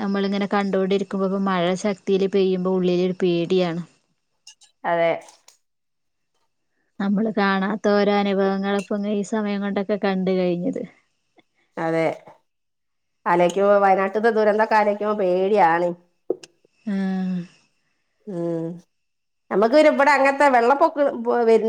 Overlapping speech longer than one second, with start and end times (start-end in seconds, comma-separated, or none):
none